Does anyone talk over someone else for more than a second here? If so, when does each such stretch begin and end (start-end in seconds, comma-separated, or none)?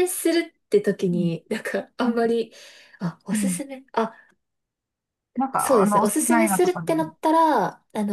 5.6-6.9